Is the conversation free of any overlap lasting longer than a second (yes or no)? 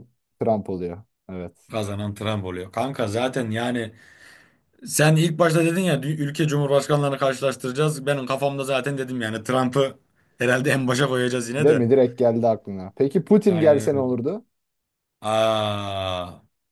yes